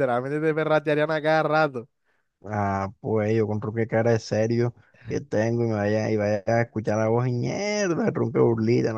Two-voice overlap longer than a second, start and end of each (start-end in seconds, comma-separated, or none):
none